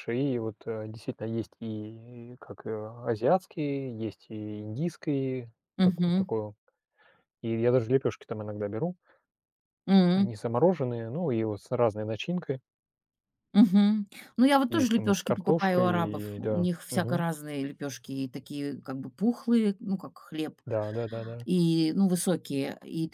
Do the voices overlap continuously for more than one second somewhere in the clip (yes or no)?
yes